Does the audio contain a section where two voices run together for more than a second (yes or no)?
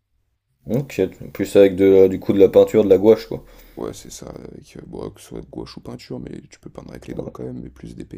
no